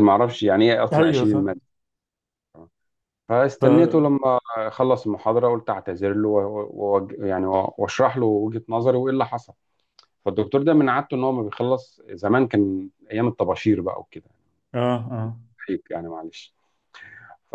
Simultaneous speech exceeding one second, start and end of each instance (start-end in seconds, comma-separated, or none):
none